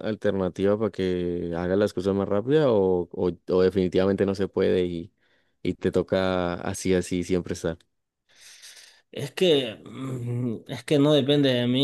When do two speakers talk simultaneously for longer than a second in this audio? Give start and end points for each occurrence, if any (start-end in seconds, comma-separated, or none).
none